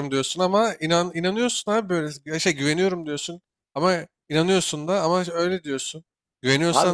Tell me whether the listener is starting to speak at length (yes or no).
no